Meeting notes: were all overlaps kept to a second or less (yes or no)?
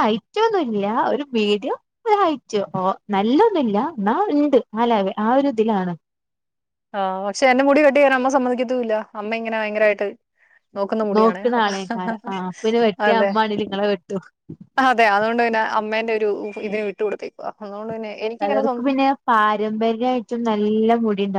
yes